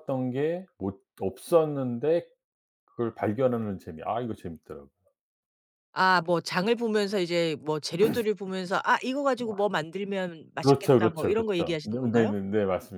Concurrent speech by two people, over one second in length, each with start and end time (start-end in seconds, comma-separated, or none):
10.6-12.3